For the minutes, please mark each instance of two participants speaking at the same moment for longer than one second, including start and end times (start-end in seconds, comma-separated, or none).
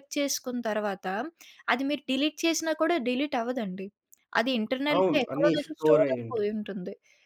5.0-6.5